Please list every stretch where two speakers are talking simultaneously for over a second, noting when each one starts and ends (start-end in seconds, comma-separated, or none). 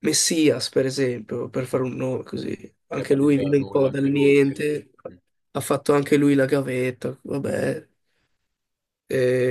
2.9-4.6